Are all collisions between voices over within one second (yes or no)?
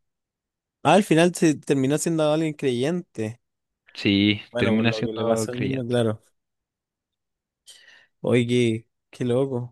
no